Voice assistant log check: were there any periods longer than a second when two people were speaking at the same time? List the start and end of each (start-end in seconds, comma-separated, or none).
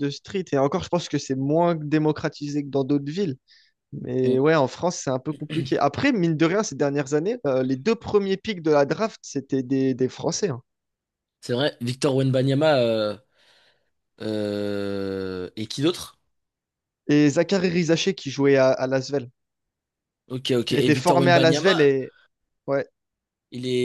20.7-21.9